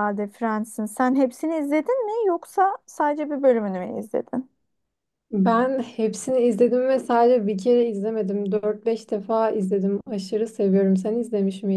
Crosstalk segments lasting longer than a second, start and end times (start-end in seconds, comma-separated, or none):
none